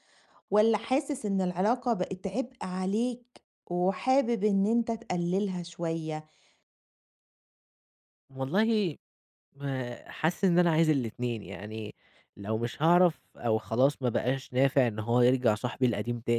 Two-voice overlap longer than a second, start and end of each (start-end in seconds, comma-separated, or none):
none